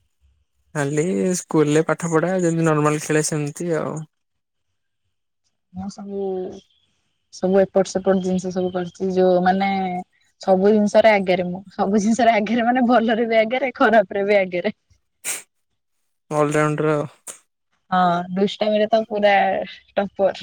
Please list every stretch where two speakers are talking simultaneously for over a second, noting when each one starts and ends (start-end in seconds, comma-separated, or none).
none